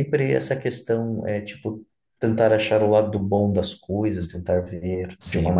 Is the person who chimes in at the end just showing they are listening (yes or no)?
no